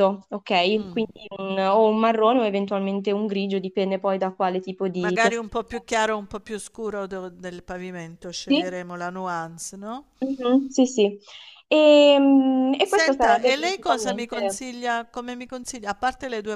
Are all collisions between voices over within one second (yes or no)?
no